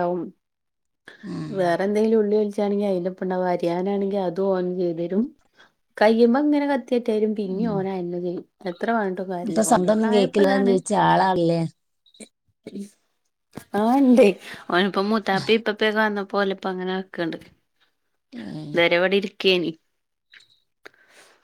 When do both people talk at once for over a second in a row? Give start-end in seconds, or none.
9.5-10.7